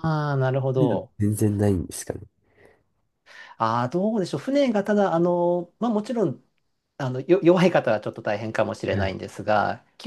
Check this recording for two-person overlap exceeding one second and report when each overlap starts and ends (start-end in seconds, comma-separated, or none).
none